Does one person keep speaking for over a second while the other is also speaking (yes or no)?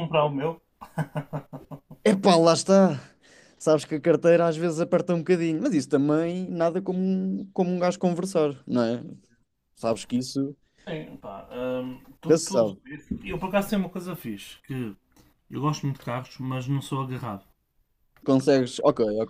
no